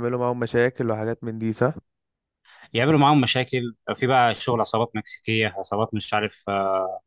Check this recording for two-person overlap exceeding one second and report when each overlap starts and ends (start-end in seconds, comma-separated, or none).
none